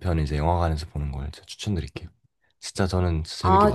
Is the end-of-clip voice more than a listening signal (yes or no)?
yes